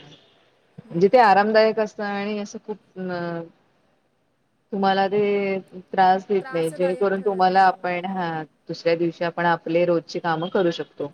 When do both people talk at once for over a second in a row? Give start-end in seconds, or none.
6.4-8.4